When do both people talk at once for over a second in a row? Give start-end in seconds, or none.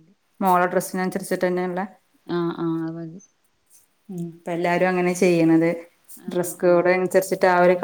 none